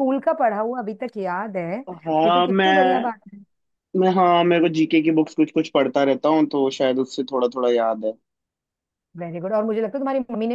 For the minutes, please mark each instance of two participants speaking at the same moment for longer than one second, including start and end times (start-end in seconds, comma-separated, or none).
none